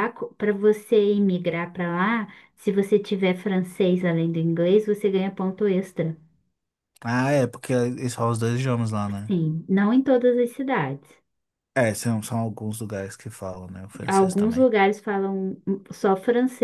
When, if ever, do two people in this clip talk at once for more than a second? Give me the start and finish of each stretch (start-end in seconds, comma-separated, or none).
none